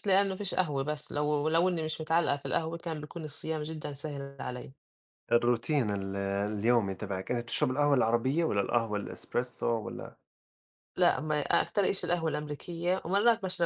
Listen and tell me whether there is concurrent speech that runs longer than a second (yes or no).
no